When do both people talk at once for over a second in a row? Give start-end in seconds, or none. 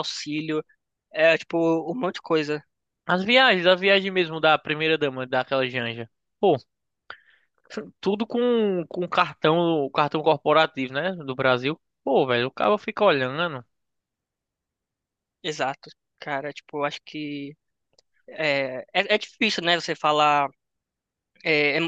none